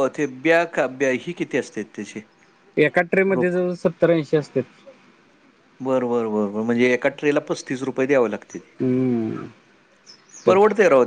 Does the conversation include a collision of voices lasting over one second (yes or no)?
no